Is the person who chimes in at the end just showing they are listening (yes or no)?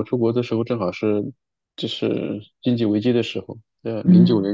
yes